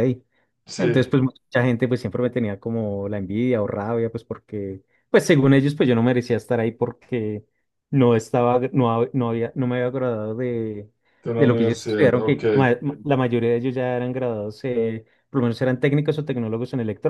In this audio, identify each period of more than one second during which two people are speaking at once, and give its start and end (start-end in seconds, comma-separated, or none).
11.4-12.7